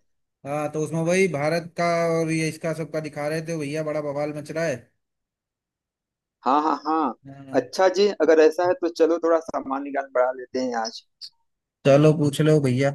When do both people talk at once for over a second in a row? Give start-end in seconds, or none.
none